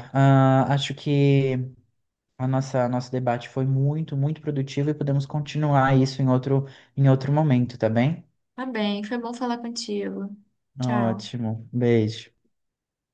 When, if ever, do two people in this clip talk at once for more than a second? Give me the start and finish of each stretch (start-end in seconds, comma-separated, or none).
none